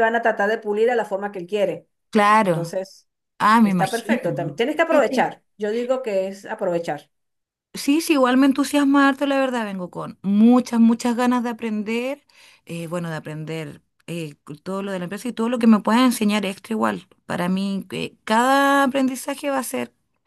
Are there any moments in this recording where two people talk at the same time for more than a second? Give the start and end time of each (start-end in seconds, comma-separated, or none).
3.6-5.3